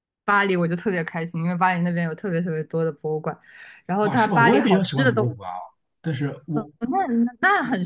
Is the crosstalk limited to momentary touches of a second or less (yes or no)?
no